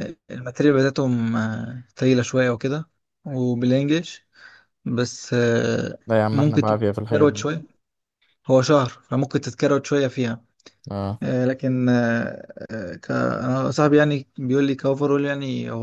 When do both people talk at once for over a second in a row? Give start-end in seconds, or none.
6.1-7.5